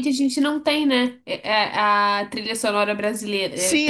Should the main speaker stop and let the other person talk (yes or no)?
yes